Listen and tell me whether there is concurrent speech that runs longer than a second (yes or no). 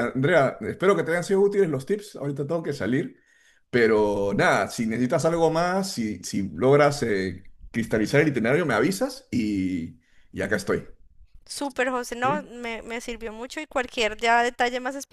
no